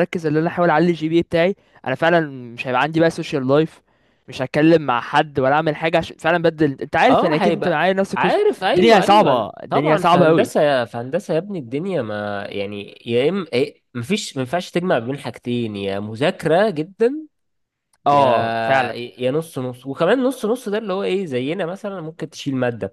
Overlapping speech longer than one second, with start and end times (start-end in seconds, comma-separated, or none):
7.1-10.5